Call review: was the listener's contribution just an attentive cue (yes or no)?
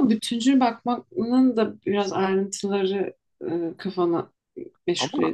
no